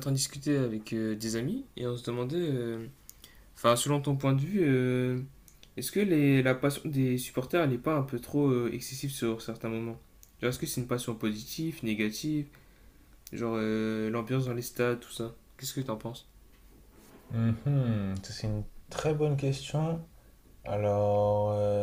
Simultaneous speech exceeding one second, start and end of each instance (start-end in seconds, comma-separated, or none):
none